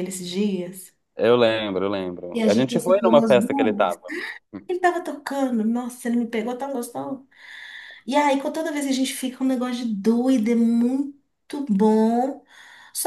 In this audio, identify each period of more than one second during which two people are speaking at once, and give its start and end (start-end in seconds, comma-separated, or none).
2.3-4.0